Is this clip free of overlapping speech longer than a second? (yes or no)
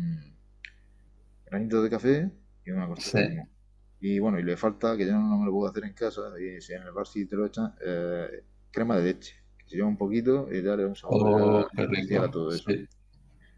no